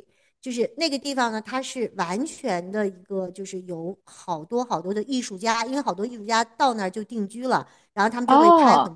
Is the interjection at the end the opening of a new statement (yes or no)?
no